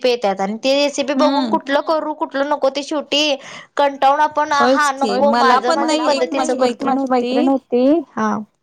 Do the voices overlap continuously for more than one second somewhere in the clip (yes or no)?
yes